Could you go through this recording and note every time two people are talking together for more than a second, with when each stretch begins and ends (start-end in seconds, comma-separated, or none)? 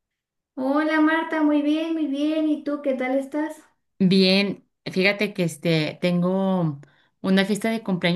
none